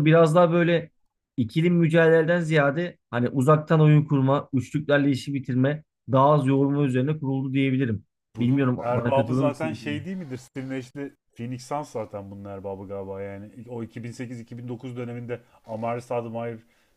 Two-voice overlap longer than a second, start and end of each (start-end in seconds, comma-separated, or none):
8.3-10.1